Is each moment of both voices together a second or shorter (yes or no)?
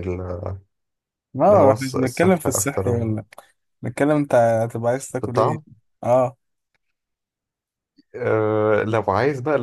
no